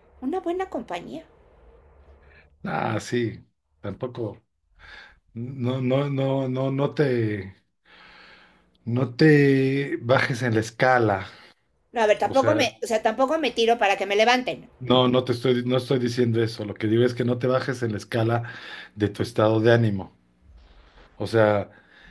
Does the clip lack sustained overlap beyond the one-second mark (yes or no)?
yes